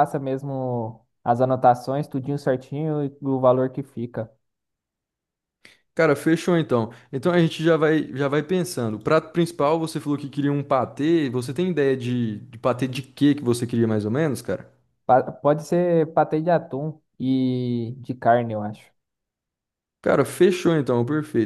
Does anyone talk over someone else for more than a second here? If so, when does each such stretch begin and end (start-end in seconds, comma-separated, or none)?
none